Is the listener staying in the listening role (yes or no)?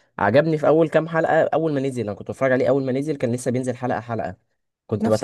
yes